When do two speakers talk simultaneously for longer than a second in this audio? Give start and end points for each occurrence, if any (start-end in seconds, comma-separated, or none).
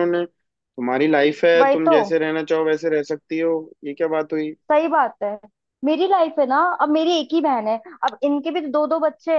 none